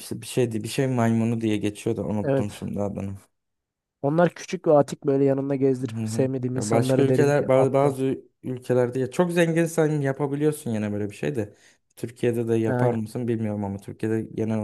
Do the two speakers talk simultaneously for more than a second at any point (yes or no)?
yes